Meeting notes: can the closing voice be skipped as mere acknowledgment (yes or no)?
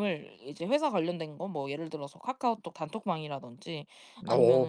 yes